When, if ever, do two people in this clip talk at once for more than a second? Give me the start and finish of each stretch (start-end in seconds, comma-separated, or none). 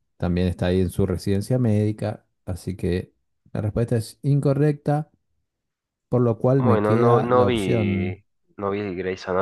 6.6-8.2